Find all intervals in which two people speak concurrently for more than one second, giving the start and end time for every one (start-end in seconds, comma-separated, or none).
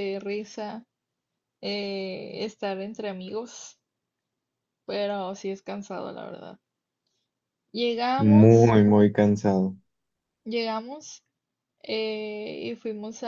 none